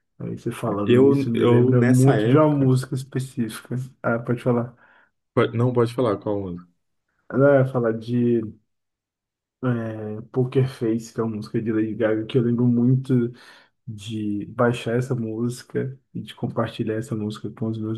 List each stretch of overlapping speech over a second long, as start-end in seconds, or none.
0.8-2.7